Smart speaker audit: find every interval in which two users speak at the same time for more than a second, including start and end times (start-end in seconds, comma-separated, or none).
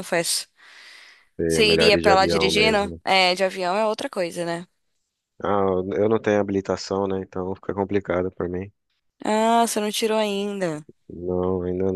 1.5-3.0